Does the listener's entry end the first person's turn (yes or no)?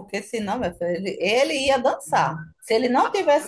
no